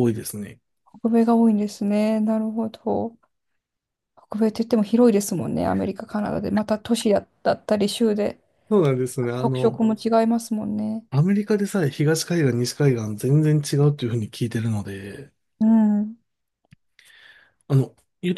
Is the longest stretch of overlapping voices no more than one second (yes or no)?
yes